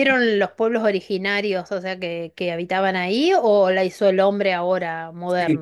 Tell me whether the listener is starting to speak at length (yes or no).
yes